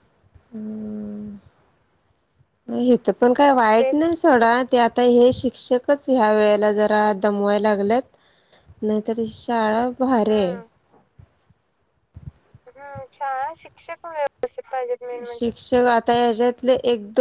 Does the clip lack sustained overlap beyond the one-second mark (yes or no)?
yes